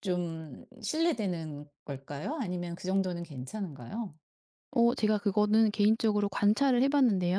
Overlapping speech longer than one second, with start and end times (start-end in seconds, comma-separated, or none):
none